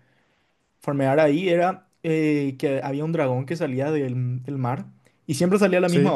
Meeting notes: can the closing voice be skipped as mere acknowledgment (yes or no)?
yes